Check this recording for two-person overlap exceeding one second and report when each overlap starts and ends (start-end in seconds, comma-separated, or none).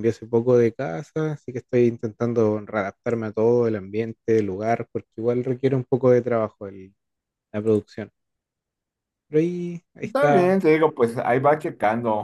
none